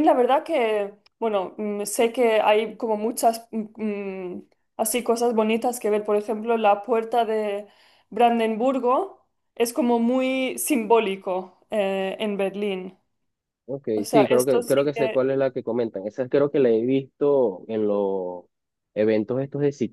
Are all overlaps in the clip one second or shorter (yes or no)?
no